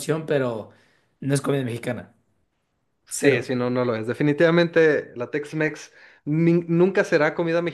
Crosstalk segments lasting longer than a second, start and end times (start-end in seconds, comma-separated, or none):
none